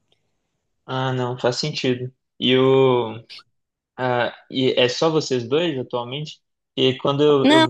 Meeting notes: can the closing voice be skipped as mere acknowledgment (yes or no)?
yes